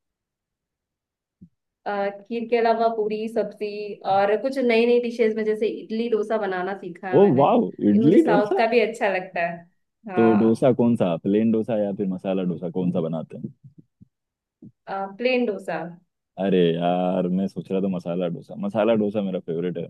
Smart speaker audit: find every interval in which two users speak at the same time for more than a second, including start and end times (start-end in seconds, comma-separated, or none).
7.2-8.6